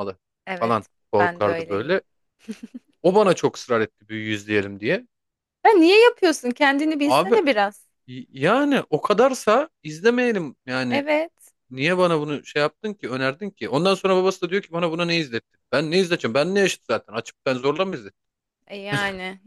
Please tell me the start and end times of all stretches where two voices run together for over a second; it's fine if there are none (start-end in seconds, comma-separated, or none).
0.6-2.0